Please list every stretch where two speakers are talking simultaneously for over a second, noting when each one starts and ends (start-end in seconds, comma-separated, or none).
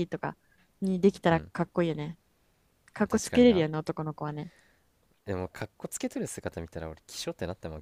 none